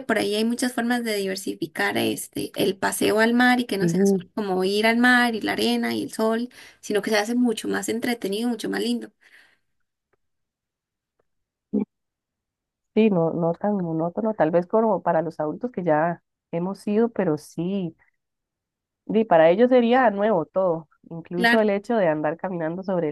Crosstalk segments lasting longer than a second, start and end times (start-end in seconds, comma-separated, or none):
none